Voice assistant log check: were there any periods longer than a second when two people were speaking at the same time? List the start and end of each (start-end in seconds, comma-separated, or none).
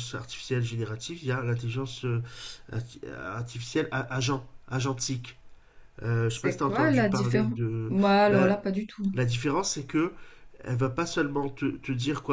6.3-8.6